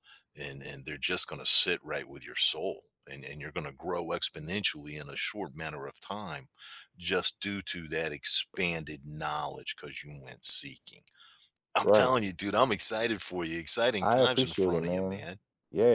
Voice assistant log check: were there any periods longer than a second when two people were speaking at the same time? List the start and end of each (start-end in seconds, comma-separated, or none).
14.0-15.3